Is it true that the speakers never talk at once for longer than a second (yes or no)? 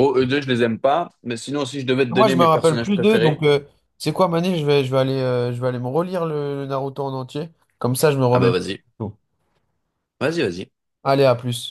no